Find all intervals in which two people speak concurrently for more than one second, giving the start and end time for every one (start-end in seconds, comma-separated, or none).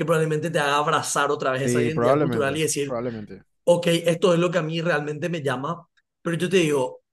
1.6-3.0